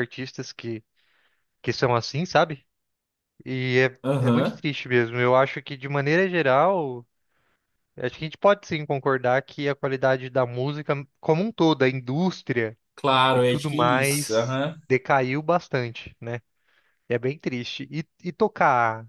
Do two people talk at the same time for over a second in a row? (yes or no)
yes